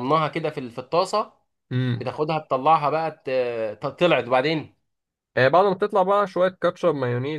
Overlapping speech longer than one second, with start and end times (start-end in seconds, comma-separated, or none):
none